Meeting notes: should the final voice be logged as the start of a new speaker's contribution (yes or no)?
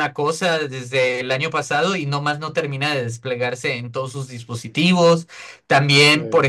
no